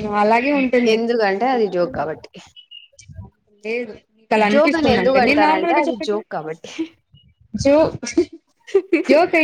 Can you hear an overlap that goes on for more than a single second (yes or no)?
yes